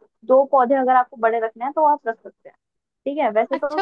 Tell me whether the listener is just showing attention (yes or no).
no